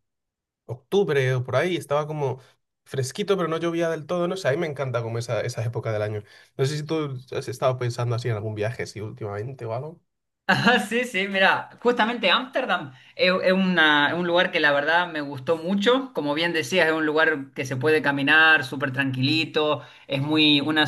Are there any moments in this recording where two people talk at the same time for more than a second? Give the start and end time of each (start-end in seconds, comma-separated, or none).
none